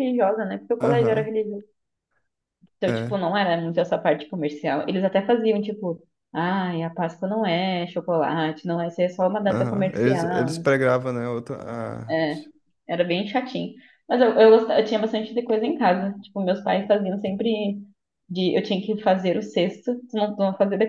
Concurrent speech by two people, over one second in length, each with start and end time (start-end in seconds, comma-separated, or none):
9.4-10.8